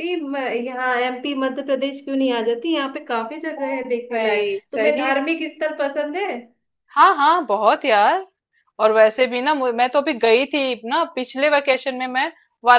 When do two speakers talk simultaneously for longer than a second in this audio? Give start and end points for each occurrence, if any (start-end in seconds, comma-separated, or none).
3.6-5.0